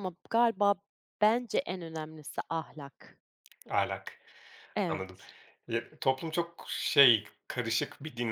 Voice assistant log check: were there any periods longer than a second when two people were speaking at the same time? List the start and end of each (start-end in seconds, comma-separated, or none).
none